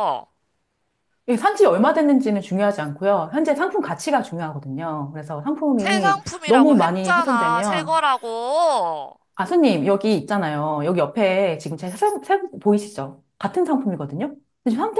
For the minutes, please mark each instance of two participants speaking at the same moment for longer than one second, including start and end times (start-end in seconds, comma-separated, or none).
5.8-8.0